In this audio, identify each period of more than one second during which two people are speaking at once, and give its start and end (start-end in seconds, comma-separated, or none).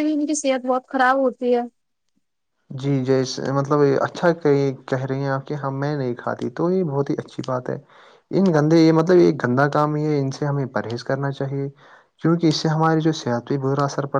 none